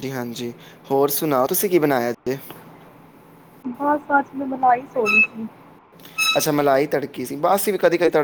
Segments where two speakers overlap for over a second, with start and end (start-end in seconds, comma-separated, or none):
none